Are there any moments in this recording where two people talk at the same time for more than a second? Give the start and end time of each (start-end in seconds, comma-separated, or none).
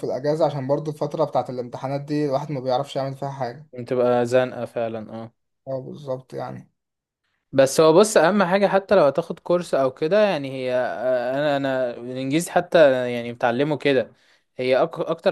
none